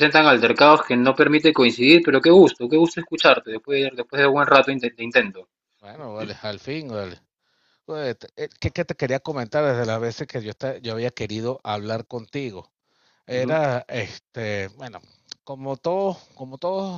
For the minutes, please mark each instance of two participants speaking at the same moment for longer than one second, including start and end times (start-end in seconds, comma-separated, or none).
none